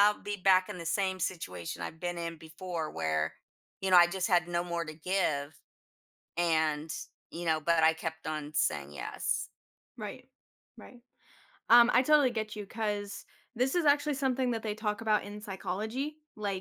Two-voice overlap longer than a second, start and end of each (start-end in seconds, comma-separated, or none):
none